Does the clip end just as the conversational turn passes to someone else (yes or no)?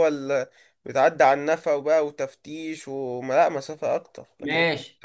yes